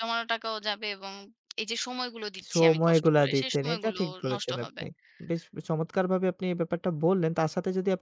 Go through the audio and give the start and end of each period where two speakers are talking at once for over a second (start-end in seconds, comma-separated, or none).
2.5-4.8